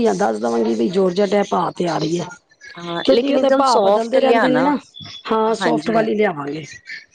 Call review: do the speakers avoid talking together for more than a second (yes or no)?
no